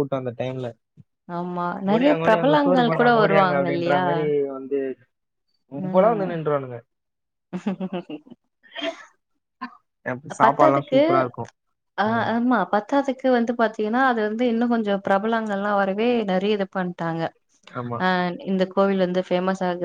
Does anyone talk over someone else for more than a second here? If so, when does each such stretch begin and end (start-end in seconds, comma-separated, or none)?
1.9-4.0